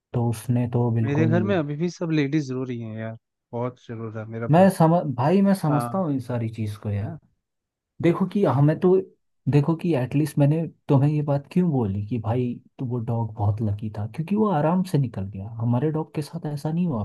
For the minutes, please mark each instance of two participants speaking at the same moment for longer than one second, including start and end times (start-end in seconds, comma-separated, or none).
none